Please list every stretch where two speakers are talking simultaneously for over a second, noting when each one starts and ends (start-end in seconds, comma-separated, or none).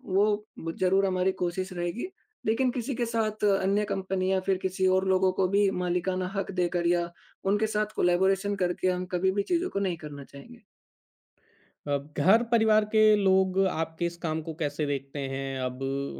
none